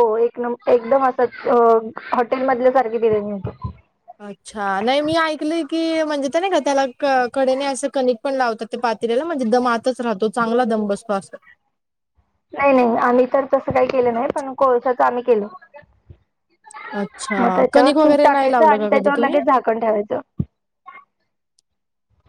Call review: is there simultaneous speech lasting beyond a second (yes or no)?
yes